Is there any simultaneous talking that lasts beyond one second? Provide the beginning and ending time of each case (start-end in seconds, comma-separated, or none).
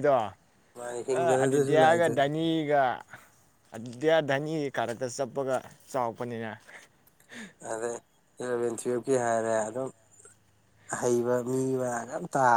0.8-2.2